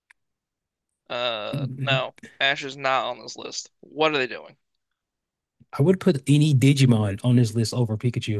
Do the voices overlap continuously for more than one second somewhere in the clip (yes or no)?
no